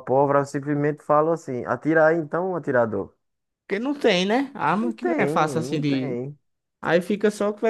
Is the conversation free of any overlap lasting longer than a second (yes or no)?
no